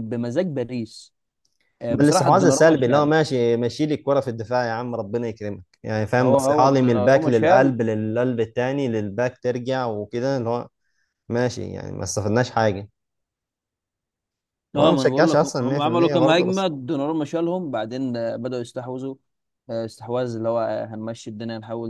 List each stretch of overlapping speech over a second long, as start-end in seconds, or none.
1.9-3.1, 6.2-7.8, 14.8-16.7